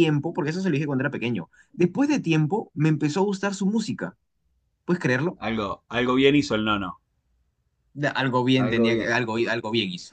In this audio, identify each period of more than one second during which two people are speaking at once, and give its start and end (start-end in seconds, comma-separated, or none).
none